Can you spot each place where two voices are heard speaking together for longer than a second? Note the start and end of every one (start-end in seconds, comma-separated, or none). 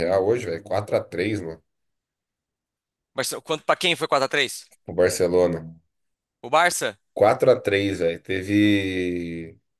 none